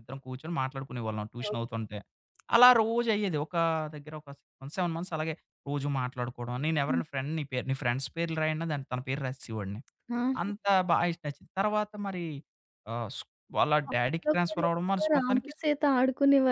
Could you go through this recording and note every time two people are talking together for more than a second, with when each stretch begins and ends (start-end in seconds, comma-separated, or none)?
13.9-15.5